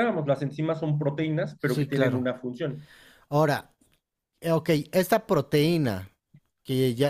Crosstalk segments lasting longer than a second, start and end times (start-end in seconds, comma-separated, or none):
none